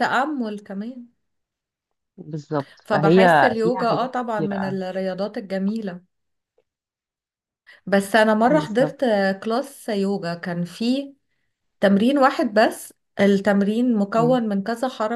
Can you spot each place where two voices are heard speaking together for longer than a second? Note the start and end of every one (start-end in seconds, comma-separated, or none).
2.8-4.8